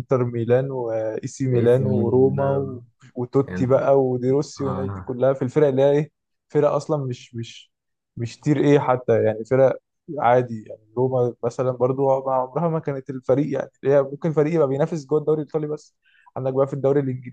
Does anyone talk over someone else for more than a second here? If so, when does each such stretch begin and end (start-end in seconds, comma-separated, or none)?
1.5-2.8